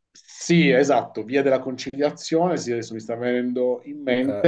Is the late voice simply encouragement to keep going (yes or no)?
yes